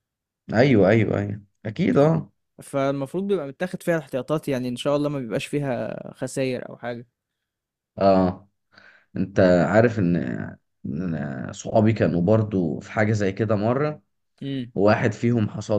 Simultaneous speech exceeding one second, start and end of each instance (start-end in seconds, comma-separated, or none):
none